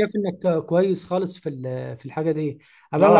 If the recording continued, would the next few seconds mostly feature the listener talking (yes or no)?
no